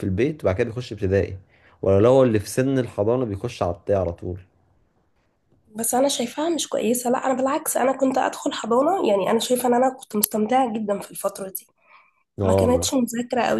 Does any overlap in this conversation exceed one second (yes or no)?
no